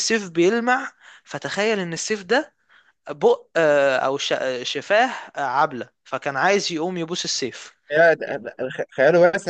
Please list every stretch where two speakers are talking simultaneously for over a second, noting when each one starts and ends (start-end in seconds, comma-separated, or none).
none